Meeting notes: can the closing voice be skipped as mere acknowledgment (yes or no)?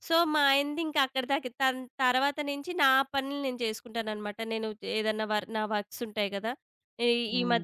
yes